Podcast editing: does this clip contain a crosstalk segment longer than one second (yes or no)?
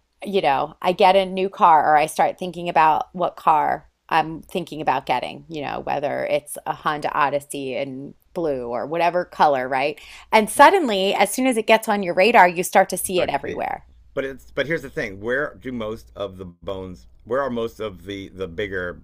no